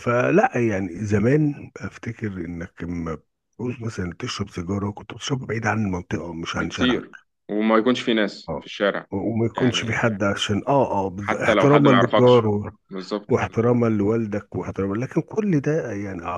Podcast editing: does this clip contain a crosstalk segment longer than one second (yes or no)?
yes